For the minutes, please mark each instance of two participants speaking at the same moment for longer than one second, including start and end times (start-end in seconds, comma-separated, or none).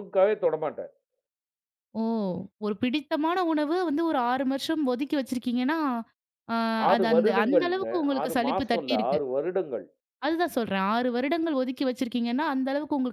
6.9-9.2